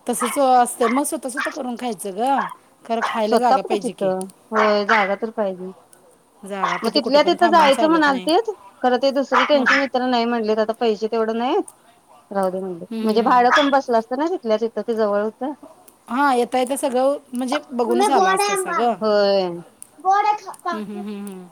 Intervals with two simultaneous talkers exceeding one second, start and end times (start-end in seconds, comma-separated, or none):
6.8-8.3